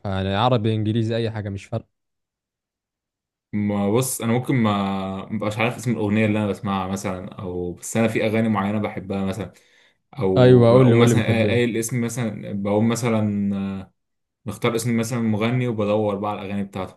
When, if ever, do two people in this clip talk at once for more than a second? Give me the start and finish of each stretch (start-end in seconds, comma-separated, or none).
10.4-11.7